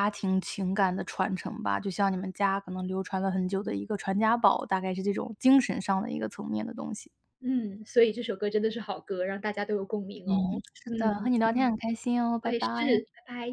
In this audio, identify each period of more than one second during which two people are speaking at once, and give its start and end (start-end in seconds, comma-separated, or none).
none